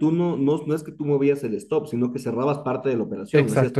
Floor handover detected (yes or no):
yes